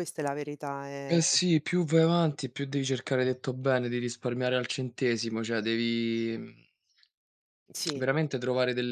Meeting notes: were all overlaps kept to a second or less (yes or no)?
yes